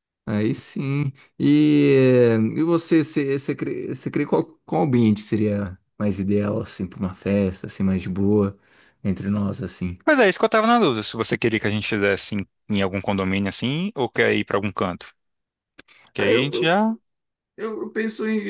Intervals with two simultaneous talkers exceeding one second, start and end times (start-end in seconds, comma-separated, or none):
none